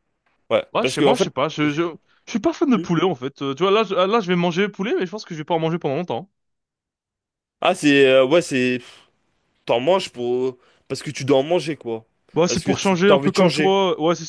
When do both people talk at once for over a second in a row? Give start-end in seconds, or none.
12.5-13.8